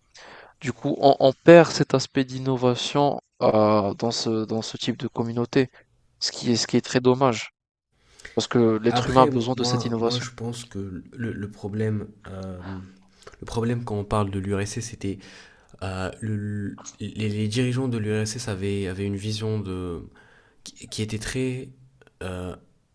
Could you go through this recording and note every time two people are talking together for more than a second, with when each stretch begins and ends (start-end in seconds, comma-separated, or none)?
8.9-10.3